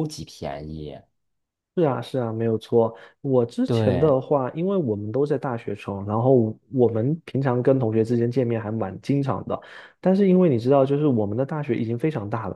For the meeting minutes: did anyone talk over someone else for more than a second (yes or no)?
no